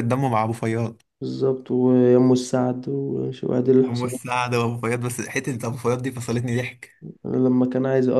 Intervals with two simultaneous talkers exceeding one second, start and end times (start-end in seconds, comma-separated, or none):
none